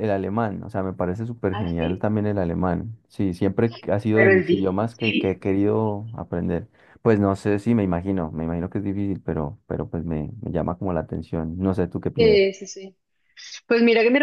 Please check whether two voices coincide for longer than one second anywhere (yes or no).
yes